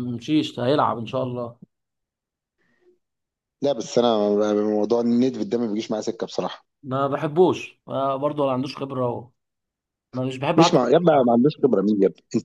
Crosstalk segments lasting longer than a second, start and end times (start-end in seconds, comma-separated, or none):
none